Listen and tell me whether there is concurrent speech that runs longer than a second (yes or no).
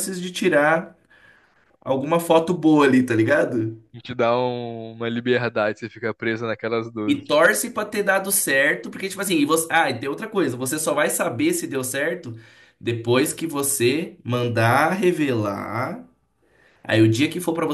no